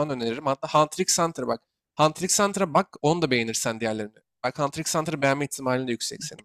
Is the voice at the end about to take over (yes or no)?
yes